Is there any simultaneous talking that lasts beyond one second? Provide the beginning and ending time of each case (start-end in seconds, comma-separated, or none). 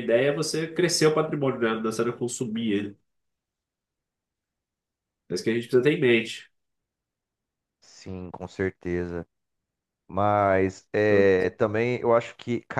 none